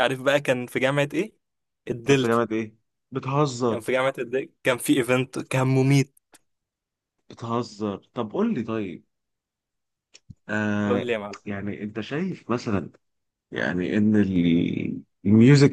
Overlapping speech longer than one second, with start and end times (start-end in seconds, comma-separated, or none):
none